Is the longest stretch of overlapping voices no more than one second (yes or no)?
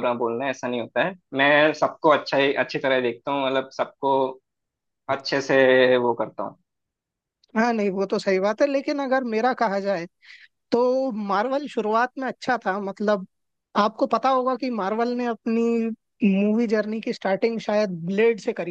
yes